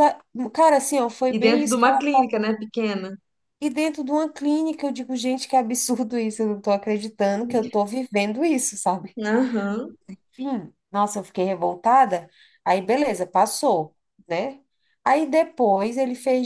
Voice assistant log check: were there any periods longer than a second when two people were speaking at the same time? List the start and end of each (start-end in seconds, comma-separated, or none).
1.3-2.5